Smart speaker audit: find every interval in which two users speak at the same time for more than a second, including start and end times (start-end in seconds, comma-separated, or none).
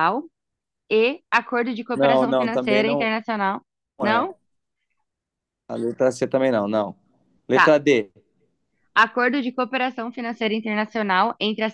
1.9-3.1